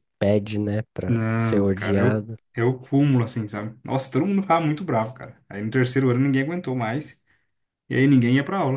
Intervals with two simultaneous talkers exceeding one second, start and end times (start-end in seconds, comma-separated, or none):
1.1-2.4